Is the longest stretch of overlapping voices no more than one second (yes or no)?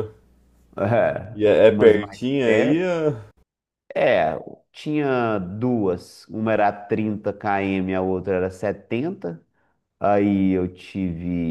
no